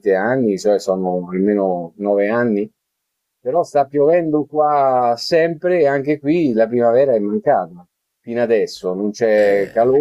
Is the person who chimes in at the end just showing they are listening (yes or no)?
yes